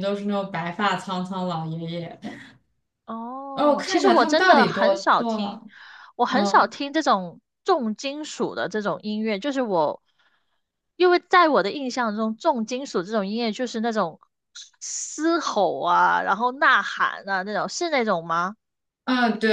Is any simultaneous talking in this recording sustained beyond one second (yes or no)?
yes